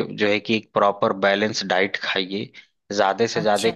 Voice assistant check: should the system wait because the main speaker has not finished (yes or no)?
yes